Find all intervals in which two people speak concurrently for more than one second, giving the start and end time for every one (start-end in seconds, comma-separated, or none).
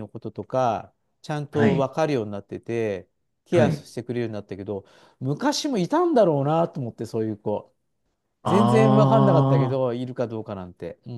8.5-9.8